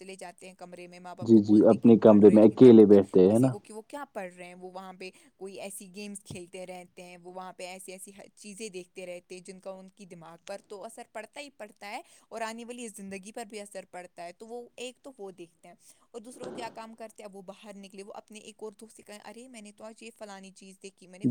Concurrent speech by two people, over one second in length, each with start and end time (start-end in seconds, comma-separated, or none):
1.3-3.5